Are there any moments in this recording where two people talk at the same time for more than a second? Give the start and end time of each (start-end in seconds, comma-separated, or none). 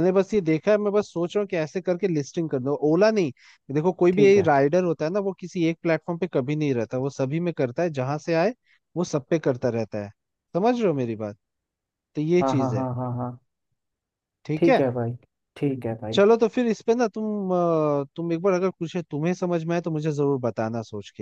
none